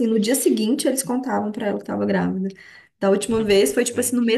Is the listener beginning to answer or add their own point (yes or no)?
no